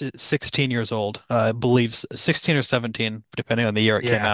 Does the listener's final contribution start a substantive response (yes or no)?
yes